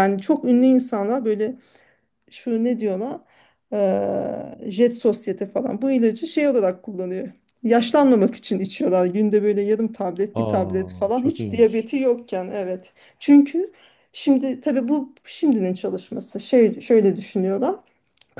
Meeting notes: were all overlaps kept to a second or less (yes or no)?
no